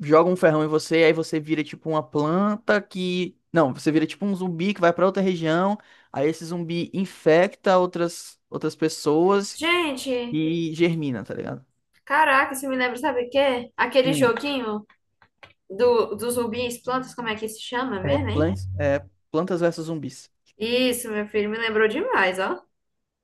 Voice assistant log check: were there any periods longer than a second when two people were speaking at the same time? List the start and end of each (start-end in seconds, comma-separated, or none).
none